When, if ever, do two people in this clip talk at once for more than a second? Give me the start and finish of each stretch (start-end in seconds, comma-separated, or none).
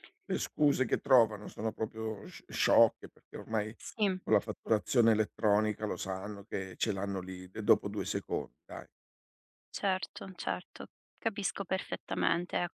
none